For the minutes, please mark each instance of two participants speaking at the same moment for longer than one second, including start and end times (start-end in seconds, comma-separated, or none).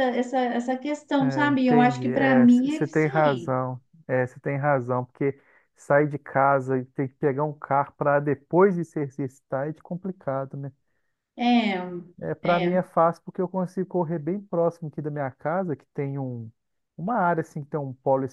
1.2-3.5